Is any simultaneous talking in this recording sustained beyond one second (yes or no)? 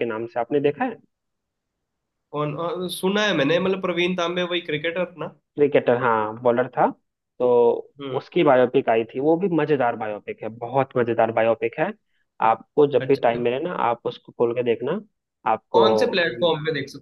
no